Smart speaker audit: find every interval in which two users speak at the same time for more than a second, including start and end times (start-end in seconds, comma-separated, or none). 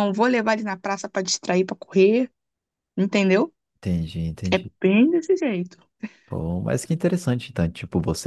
none